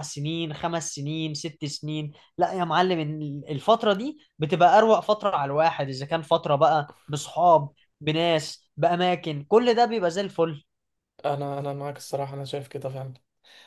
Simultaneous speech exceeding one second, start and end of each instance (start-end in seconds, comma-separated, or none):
none